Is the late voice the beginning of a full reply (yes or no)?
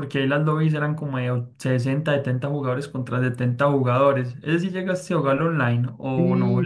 yes